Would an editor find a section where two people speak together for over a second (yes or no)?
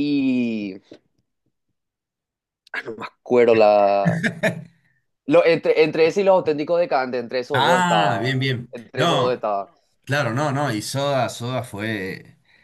yes